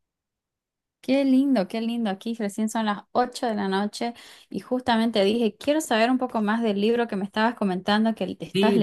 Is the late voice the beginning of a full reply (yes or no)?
yes